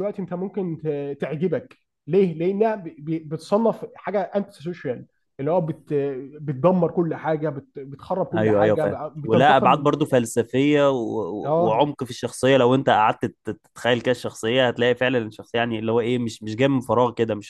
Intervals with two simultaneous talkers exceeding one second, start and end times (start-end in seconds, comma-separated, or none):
8.3-10.2